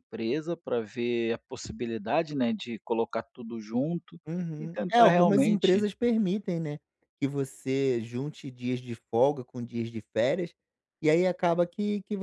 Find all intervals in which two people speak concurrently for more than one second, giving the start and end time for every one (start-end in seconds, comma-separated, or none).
4.6-5.8